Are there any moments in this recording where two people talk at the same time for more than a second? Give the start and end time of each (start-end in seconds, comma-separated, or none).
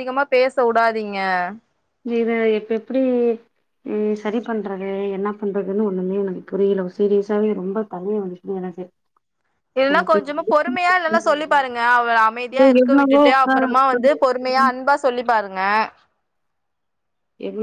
12.5-14.6